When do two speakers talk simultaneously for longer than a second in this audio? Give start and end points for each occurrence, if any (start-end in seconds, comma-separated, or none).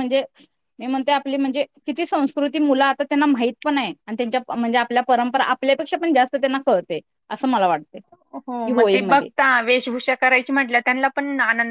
none